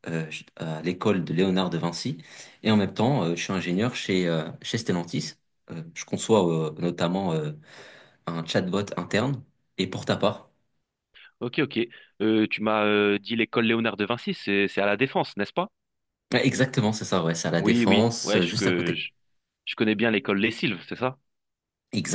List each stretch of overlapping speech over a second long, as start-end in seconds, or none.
17.5-19.1